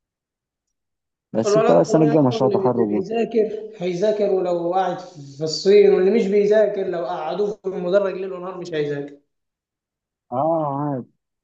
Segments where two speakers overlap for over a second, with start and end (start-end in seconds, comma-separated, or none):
1.4-3.1